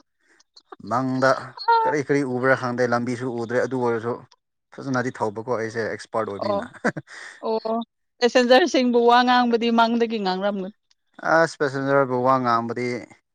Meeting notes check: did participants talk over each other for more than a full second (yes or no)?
no